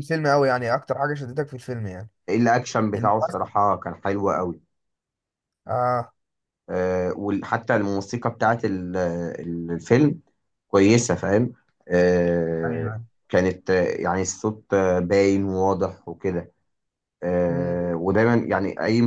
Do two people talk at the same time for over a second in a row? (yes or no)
no